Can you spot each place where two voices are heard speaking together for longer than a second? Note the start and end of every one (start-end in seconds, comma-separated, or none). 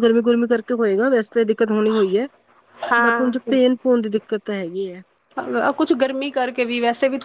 none